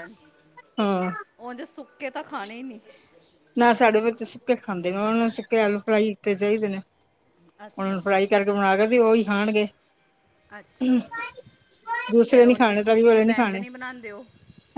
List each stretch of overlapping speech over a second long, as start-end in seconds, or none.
12.3-13.6